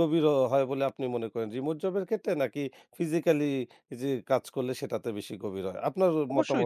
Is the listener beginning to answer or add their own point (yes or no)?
yes